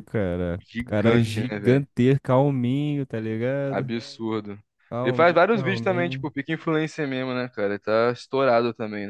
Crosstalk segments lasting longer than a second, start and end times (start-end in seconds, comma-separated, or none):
0.6-1.9, 5.0-6.3